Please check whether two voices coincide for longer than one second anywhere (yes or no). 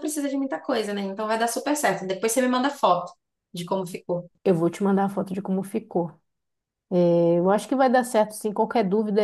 no